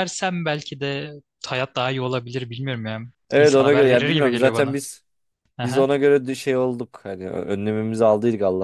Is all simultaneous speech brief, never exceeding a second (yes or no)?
no